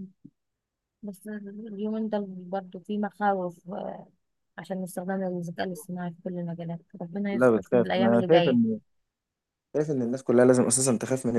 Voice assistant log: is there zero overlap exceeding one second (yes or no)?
no